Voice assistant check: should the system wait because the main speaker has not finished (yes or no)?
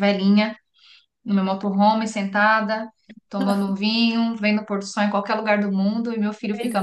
no